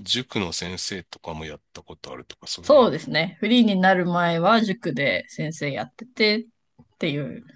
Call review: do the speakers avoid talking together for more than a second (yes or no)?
yes